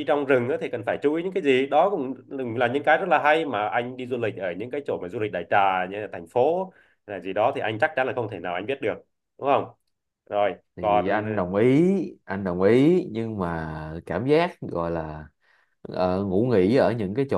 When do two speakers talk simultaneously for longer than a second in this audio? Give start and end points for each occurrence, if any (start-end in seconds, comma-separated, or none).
none